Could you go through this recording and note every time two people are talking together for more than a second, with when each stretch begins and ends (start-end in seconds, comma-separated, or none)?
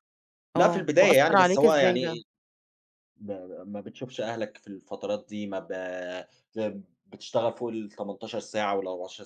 0.6-2.2